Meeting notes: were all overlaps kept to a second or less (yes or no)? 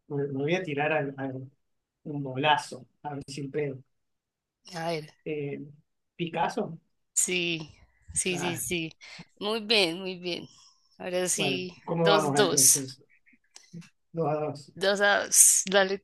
no